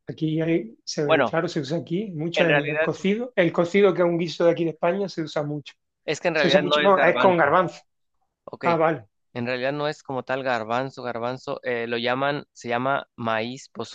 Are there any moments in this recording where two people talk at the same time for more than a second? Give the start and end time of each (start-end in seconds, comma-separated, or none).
6.3-7.5